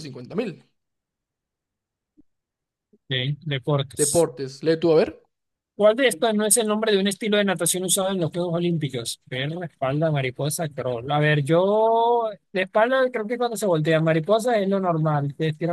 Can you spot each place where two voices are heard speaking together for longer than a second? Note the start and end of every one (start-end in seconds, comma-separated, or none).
none